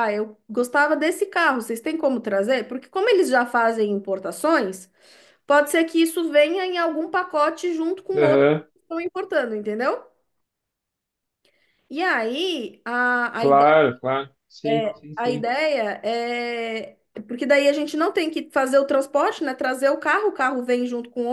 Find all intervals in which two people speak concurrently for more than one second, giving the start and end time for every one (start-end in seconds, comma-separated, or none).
none